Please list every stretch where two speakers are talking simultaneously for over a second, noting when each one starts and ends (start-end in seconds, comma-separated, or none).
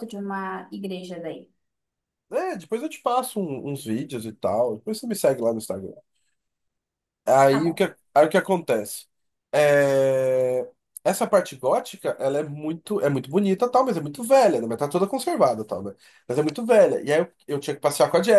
none